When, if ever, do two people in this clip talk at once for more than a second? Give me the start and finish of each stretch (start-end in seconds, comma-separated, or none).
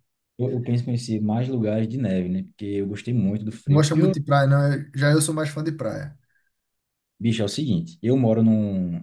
none